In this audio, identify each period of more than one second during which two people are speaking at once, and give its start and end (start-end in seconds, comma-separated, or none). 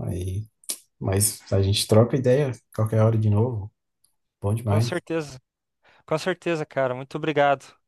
none